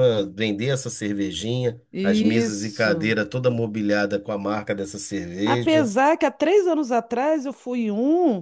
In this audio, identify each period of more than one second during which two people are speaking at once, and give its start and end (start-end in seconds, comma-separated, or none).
1.9-3.1